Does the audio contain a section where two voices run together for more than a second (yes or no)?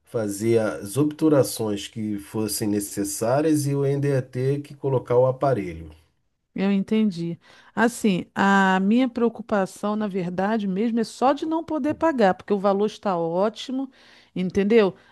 no